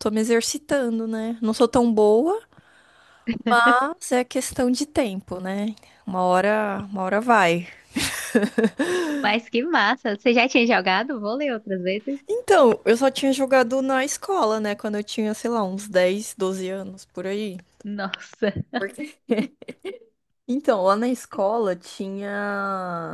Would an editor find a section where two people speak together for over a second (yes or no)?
no